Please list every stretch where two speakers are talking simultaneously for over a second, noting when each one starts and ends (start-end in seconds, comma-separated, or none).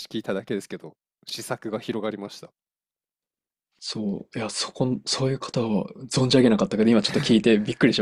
none